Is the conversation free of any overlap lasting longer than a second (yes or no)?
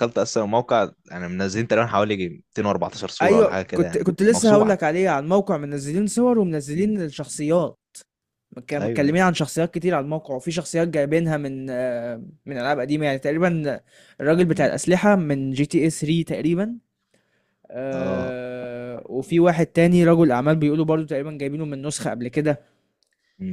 no